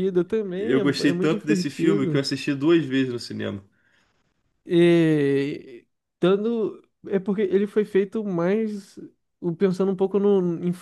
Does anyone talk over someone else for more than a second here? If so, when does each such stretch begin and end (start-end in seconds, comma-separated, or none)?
0.6-2.2